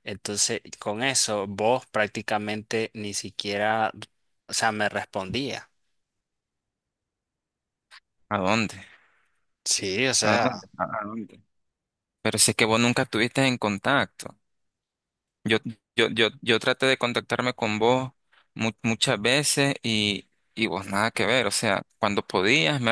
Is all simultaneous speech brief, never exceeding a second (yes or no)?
yes